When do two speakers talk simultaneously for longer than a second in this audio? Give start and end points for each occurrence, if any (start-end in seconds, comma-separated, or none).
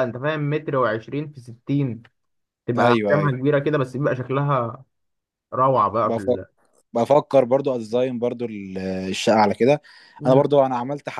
none